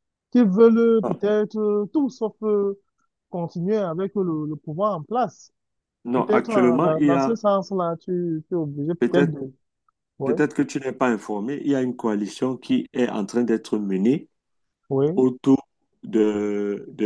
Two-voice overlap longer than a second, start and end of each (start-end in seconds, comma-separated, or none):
6.2-7.4